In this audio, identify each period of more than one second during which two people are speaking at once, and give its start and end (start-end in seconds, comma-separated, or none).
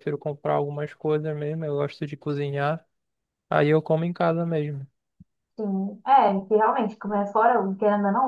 none